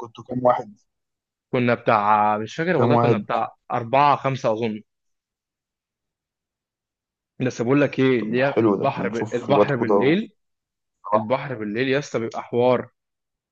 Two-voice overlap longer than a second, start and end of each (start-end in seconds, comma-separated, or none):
8.2-10.2